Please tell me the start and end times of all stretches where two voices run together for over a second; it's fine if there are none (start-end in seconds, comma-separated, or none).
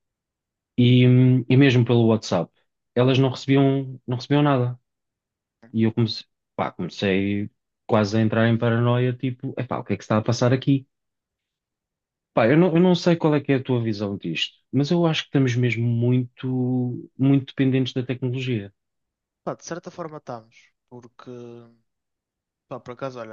none